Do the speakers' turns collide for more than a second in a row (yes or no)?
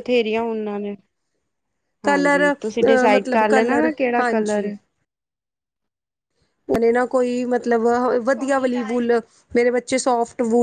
yes